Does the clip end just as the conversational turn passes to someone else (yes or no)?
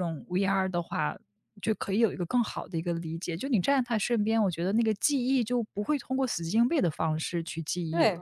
yes